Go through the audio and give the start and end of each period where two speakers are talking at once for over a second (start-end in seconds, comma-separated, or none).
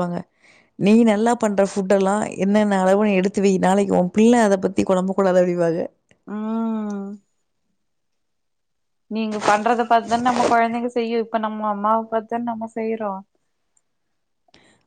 none